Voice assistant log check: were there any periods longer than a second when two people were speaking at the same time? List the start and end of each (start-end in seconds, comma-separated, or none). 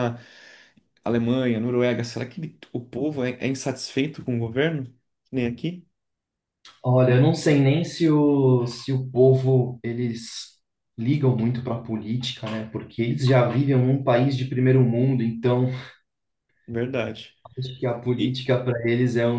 none